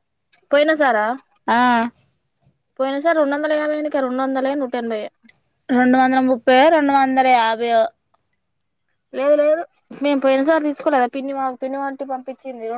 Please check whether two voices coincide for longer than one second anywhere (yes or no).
no